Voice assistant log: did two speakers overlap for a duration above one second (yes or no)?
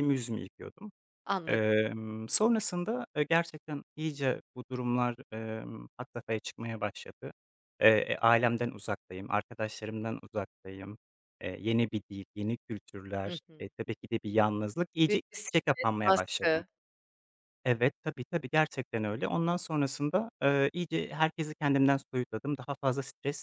yes